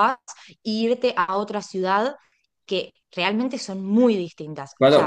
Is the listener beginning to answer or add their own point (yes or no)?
yes